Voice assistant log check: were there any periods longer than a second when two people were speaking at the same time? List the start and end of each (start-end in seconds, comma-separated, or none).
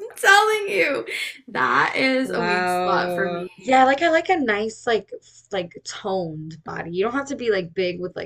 2.2-3.5